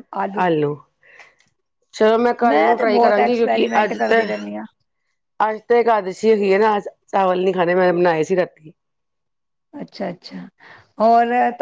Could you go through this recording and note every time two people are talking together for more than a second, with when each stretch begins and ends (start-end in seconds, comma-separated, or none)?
2.8-4.2